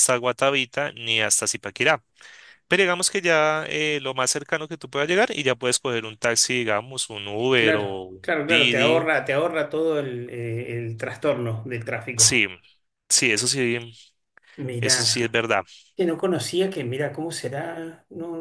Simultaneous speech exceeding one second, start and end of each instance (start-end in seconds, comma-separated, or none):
7.5-9.1